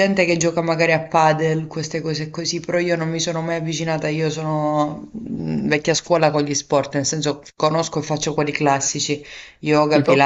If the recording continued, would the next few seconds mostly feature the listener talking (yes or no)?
no